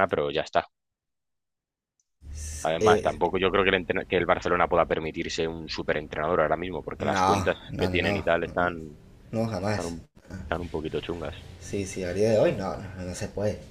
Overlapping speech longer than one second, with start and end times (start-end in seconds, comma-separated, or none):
7.0-8.2